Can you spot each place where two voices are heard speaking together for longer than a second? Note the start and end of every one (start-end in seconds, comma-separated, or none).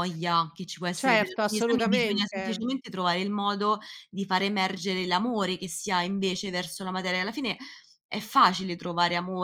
1.0-2.6